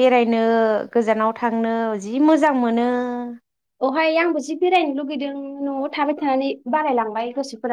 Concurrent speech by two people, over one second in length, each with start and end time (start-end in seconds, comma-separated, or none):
none